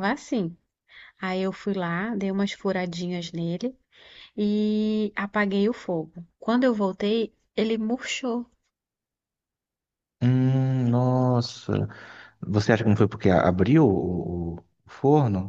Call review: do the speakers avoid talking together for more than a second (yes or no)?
yes